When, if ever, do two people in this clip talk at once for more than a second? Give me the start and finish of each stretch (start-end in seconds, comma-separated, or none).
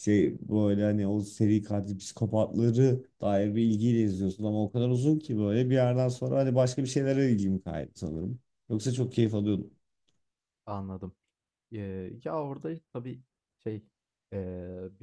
none